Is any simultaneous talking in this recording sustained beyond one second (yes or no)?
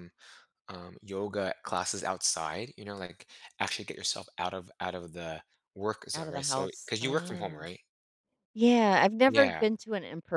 yes